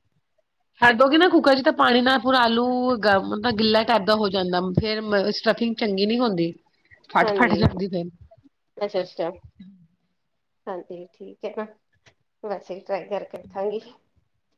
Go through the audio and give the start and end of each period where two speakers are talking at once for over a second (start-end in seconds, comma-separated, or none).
none